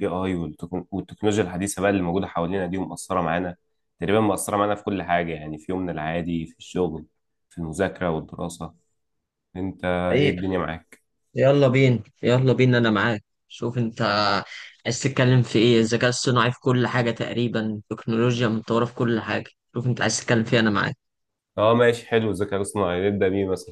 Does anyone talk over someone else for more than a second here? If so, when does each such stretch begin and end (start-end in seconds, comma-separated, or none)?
none